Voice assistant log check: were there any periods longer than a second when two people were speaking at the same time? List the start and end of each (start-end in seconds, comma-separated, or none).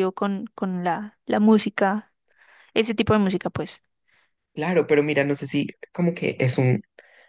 none